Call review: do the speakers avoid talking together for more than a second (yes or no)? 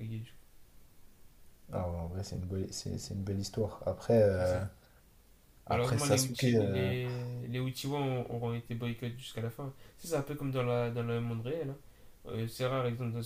no